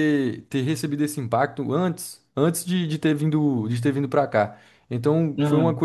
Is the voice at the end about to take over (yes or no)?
no